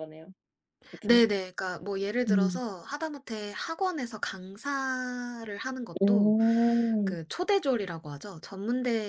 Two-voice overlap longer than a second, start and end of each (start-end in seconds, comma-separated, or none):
none